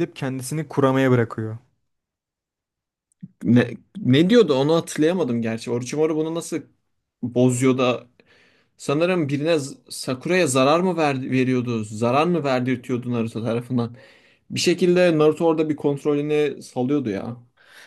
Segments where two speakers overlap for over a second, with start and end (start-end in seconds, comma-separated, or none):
none